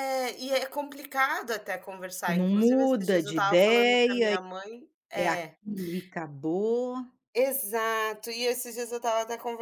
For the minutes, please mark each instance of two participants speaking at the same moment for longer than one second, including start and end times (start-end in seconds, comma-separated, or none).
2.3-4.3